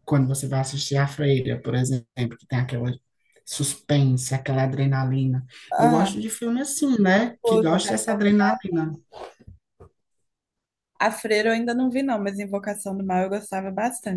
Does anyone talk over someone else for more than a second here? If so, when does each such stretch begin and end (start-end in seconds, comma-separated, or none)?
7.2-8.6